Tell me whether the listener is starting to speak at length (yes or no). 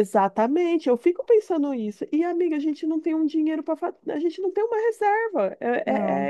no